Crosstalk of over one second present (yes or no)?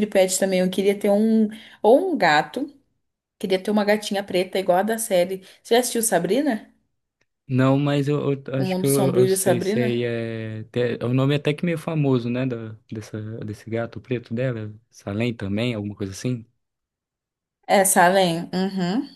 yes